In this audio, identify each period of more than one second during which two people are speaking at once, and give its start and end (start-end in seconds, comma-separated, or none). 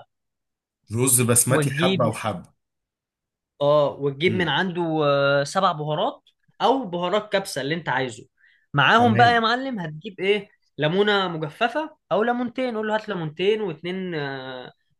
none